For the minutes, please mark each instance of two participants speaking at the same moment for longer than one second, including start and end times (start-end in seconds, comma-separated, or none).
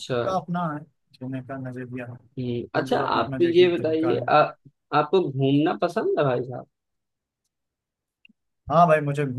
2.8-4.3